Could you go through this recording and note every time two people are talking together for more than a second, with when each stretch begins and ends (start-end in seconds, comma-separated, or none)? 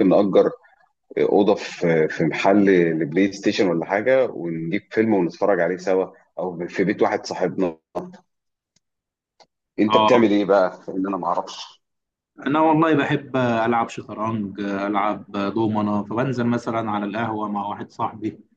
none